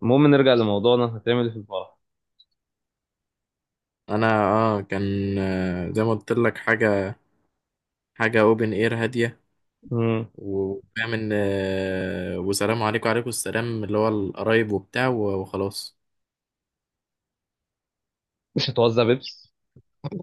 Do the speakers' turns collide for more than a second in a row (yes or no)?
no